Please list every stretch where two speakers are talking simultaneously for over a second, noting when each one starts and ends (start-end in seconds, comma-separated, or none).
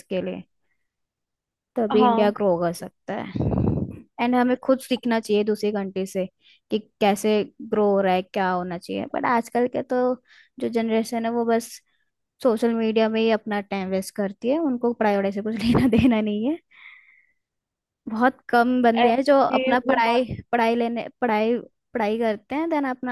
19.0-20.2